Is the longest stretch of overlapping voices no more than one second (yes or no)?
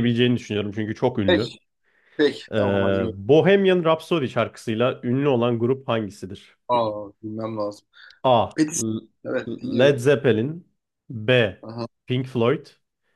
yes